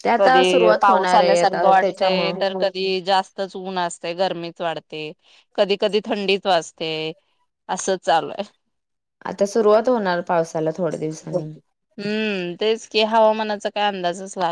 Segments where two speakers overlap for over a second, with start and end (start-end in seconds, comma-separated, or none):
0.5-2.3